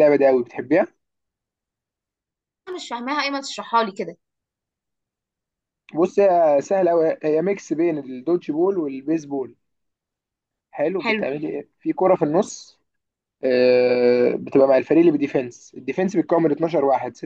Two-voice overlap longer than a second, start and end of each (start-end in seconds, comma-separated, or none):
none